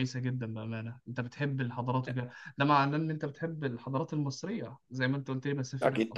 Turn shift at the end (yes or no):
yes